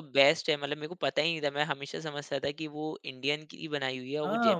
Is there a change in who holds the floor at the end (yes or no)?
yes